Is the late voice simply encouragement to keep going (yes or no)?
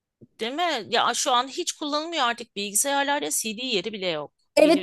no